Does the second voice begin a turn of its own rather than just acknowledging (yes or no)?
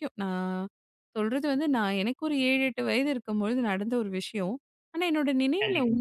no